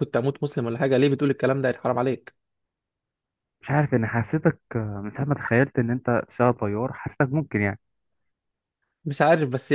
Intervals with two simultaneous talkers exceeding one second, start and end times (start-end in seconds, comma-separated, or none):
none